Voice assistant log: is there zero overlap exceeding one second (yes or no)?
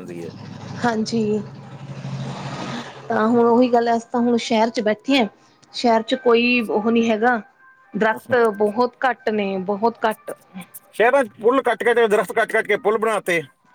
yes